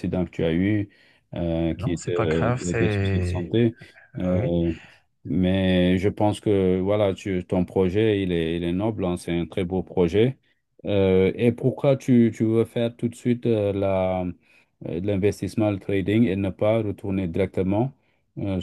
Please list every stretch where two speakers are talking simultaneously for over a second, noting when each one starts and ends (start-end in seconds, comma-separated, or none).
1.8-3.5